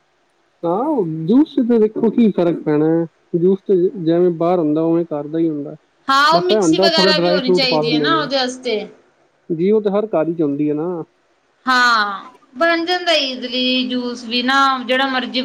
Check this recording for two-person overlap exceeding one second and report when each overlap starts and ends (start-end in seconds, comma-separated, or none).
6.3-8.3